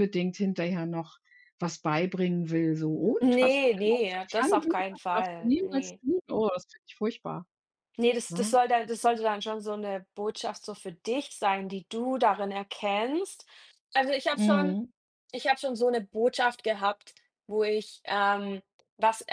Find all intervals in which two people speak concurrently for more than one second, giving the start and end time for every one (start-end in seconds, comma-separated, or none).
3.2-6.0